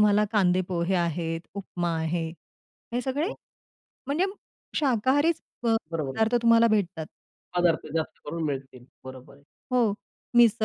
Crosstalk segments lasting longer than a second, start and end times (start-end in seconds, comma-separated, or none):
none